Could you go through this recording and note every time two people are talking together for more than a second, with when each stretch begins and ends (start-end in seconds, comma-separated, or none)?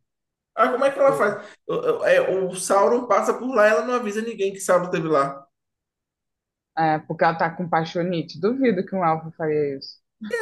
none